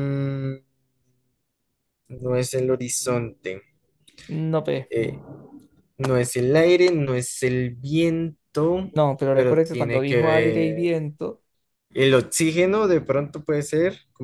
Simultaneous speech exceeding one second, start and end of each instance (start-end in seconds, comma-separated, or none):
9.3-10.9